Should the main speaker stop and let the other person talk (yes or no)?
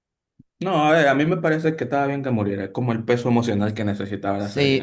yes